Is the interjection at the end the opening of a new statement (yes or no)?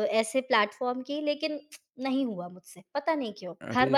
yes